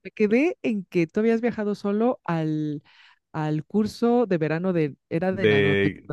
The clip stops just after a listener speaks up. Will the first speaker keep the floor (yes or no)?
no